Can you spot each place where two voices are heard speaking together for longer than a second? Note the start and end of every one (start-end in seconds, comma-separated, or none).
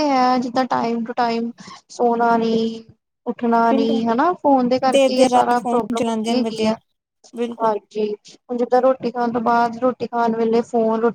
5.0-6.7